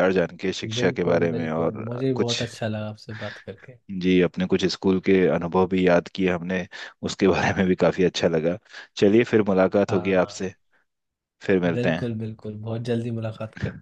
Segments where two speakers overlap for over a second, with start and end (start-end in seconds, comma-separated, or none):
0.8-2.4